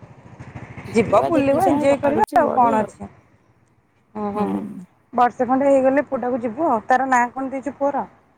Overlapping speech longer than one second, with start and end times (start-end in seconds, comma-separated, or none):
0.9-2.7